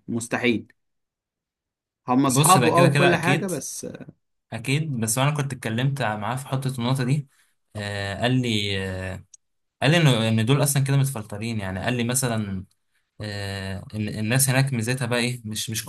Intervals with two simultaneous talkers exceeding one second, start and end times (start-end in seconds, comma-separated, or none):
2.3-3.5